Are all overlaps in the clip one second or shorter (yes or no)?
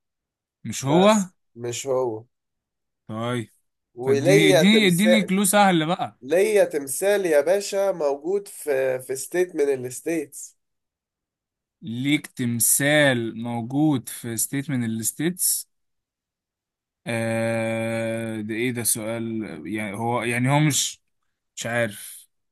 no